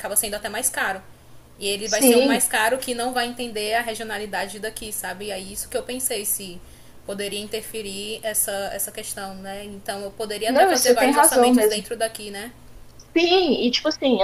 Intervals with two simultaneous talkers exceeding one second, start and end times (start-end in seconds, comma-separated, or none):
10.5-11.8